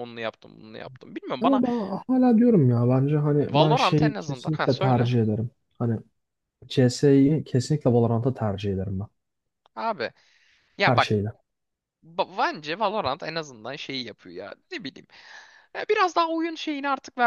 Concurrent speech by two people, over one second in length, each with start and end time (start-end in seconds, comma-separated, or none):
3.5-5.1